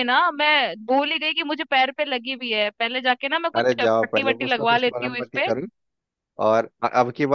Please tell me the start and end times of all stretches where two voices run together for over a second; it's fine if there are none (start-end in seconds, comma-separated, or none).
3.6-5.5